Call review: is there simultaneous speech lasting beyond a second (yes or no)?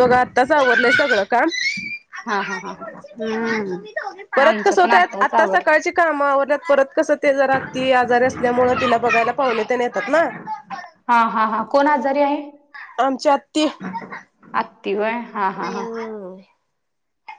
yes